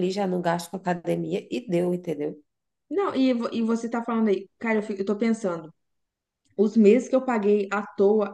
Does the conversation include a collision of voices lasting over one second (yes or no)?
no